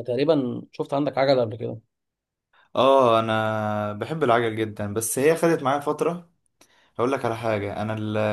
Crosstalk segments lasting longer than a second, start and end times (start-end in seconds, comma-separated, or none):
none